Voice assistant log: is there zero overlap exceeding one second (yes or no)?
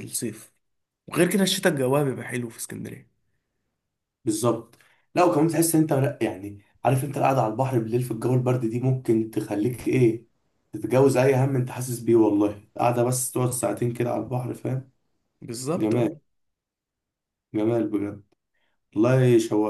yes